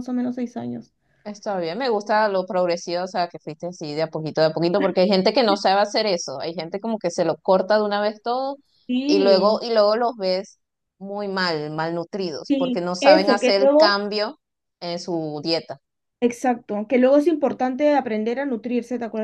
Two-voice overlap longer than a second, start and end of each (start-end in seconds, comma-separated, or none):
12.5-14.0